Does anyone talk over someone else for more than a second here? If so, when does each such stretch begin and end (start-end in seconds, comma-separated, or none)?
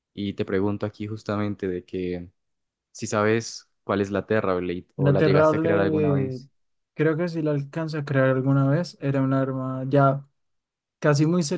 5.0-6.4